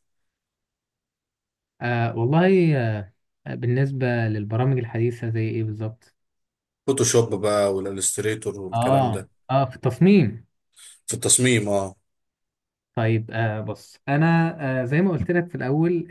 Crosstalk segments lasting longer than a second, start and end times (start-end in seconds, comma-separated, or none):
none